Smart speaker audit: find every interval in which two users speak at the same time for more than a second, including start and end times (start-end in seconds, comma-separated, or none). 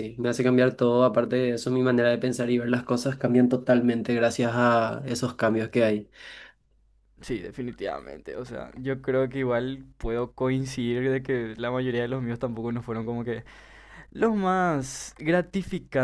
none